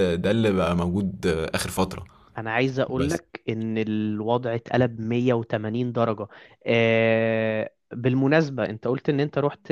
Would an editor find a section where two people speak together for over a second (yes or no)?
no